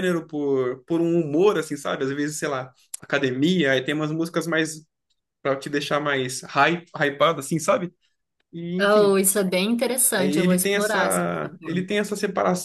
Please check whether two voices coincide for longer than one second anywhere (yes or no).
yes